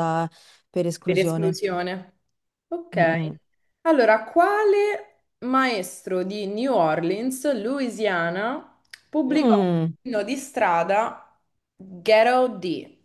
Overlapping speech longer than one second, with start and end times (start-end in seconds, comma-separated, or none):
none